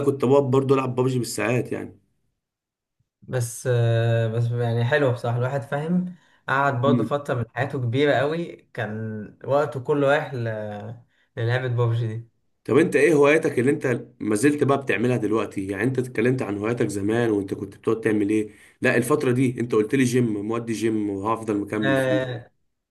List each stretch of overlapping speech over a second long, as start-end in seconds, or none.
none